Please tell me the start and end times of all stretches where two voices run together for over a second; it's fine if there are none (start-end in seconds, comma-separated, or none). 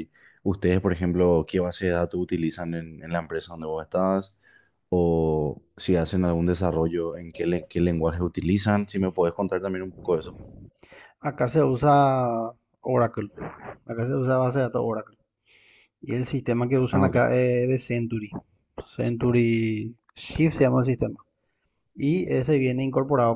none